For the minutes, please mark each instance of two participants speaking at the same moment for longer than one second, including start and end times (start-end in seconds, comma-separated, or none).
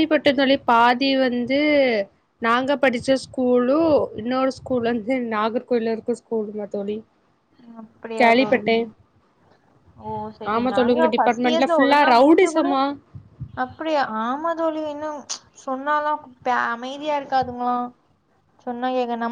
10.5-12.7